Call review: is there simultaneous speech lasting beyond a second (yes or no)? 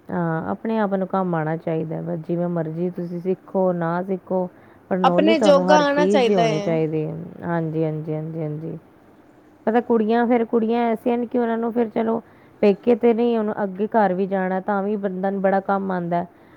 yes